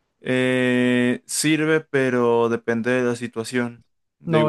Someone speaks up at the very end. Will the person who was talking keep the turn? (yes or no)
no